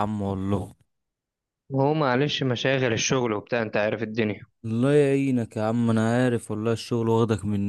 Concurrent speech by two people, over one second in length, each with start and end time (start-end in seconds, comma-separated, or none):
none